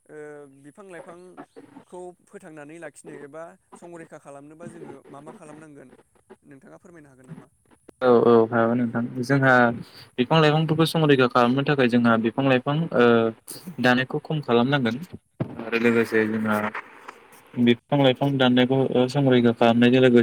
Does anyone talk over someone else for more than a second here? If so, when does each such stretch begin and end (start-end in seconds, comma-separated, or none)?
none